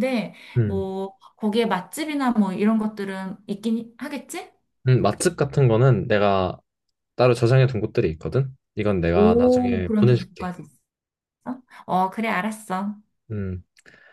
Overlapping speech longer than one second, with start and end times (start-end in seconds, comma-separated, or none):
9.1-10.5